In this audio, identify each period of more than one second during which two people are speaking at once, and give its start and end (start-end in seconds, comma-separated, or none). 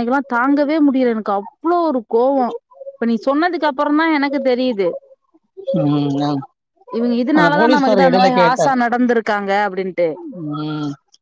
7.4-8.7